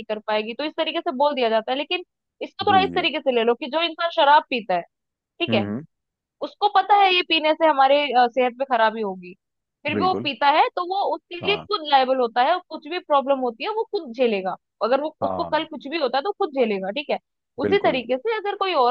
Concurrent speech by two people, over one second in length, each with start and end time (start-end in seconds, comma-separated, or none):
none